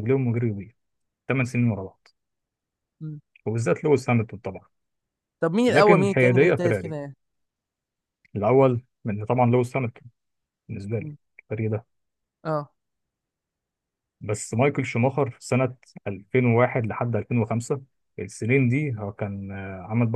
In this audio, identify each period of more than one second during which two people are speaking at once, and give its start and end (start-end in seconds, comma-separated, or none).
5.7-7.0